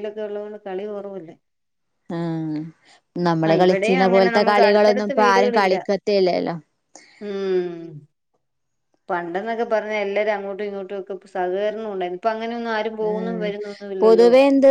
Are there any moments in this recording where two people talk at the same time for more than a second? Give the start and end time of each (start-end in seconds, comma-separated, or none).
3.5-5.8